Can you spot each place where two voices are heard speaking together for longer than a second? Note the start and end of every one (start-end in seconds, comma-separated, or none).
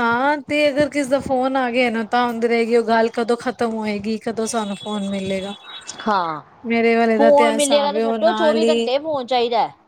7.4-8.8